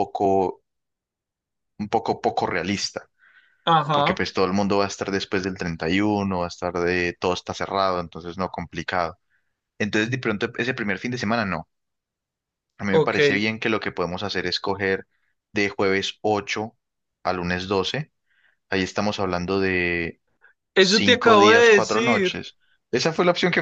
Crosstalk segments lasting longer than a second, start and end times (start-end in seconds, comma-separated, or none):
20.8-22.4